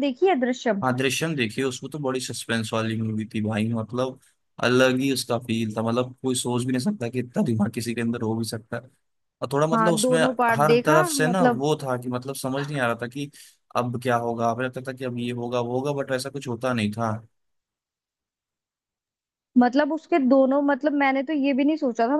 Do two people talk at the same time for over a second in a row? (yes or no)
yes